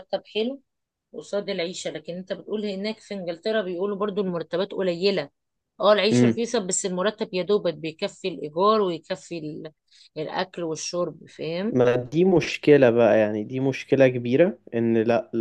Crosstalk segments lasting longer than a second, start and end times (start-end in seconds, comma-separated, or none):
none